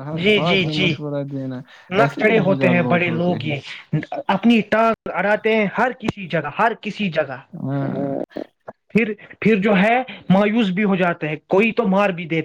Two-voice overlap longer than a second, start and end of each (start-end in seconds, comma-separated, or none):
2.0-3.5